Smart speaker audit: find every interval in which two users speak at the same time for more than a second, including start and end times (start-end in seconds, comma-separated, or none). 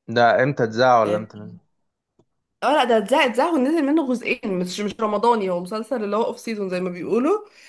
none